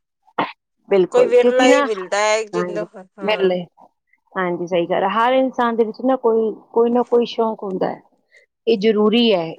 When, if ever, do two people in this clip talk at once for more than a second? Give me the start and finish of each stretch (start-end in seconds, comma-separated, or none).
1.1-2.8